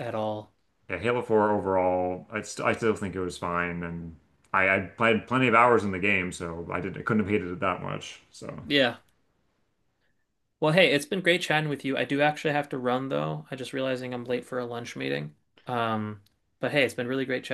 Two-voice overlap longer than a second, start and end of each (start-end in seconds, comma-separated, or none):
none